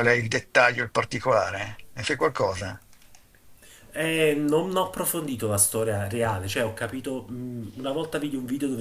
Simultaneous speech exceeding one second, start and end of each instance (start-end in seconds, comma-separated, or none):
none